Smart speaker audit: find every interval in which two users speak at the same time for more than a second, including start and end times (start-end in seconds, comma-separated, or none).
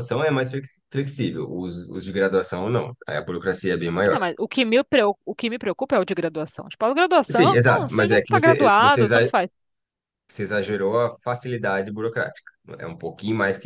7.3-9.3